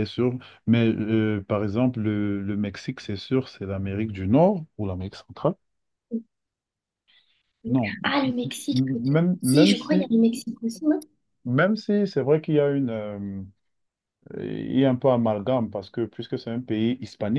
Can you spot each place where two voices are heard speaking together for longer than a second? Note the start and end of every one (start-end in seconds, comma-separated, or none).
7.6-10.1